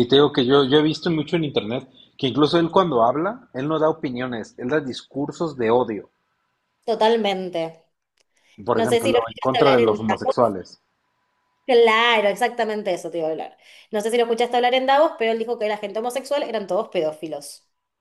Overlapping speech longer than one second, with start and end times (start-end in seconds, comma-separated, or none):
8.7-10.0